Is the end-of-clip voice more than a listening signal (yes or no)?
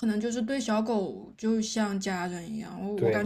no